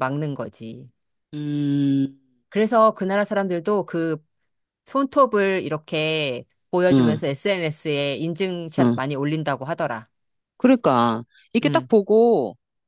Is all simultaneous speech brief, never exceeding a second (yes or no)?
yes